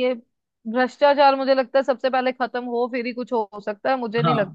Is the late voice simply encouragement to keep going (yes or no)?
no